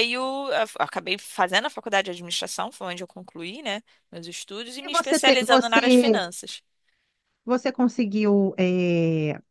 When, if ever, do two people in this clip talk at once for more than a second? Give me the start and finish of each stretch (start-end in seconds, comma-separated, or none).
4.8-6.2